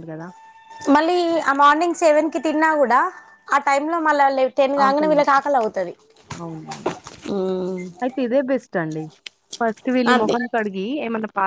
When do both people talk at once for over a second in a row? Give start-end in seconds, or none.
none